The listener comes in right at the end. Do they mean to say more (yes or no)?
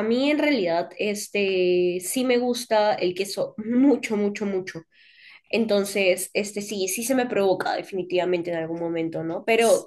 no